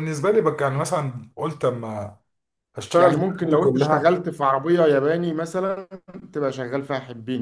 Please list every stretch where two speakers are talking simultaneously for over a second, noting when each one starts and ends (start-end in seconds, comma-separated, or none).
3.0-4.2